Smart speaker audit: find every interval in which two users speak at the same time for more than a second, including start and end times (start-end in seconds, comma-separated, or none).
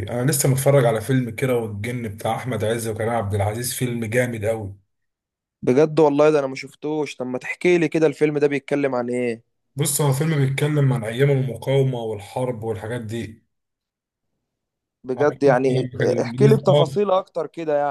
15.2-17.0